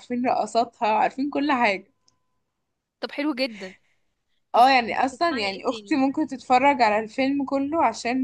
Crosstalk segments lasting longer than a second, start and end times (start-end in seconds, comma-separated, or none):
4.5-6.0